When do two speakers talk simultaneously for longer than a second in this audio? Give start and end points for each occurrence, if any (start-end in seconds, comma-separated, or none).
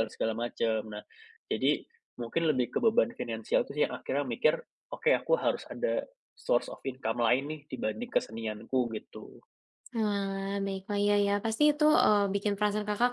none